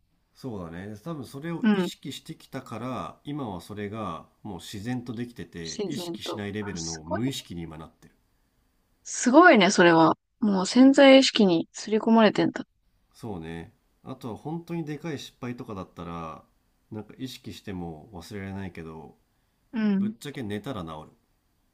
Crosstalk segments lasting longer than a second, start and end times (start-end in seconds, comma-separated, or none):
5.6-7.3